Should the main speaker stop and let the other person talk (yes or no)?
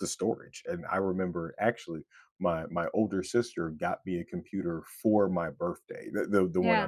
no